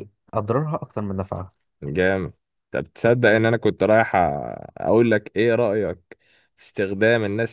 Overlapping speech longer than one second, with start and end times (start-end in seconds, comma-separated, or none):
none